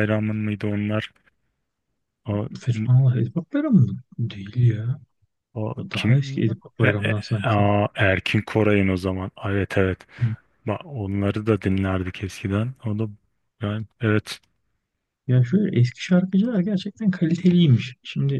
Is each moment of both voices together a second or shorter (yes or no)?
no